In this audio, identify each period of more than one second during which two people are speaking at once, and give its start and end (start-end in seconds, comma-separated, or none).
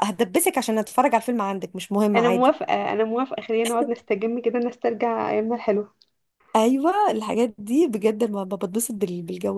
none